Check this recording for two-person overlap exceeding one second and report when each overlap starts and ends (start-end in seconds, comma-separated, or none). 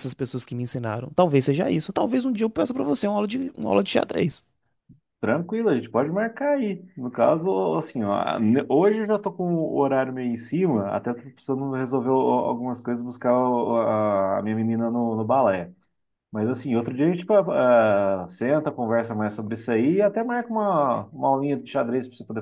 none